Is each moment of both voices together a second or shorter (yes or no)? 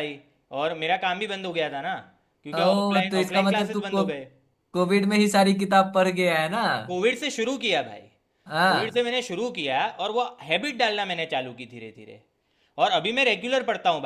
no